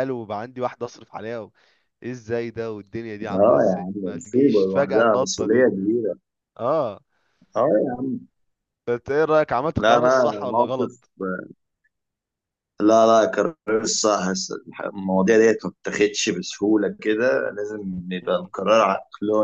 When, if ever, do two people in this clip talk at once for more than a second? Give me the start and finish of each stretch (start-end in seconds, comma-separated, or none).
3.3-5.7, 9.8-11.0